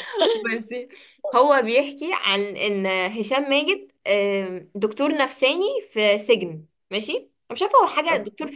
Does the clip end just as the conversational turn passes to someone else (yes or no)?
no